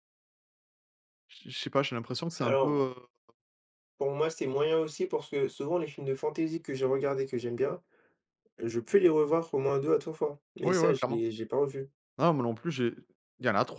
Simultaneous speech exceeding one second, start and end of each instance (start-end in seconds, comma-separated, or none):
none